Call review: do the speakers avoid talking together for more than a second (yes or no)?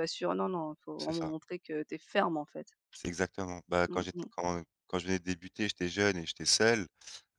yes